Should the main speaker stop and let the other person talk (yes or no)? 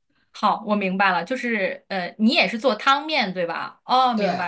no